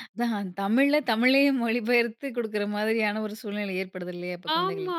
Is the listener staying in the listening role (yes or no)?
no